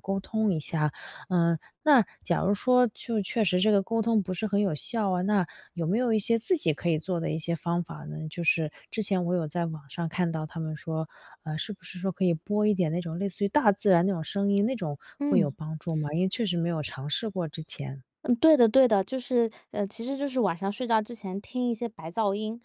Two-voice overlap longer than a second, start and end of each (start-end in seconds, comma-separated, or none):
none